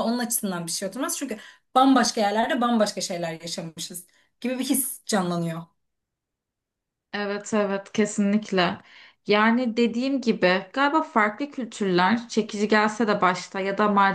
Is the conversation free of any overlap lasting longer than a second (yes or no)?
yes